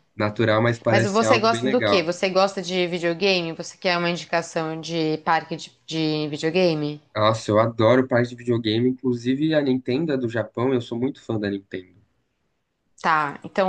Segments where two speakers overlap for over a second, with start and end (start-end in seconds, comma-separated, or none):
0.9-2.1